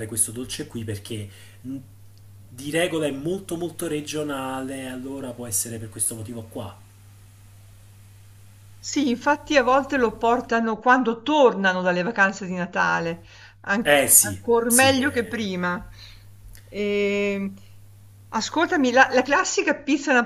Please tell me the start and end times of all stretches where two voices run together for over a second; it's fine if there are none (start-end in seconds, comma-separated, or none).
13.8-15.4